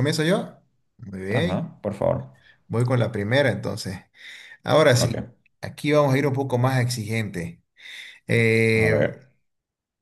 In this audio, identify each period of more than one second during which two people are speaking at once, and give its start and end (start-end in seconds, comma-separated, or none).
none